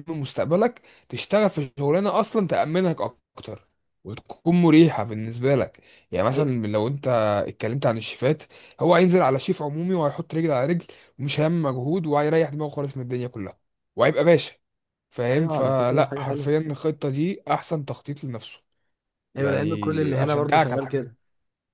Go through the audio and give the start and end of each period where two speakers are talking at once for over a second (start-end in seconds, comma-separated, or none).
15.3-16.5, 19.4-21.1